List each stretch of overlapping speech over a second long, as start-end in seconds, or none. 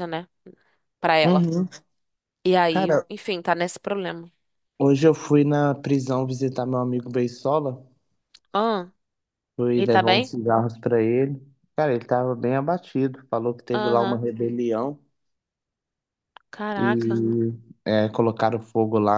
none